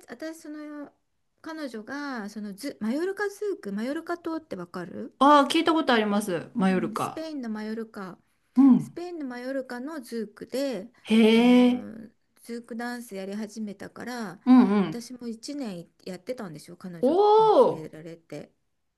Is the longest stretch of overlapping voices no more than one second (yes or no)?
yes